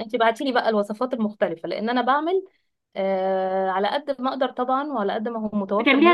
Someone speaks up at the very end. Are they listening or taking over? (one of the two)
taking over